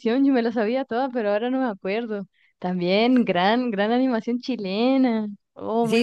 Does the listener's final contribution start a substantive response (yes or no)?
yes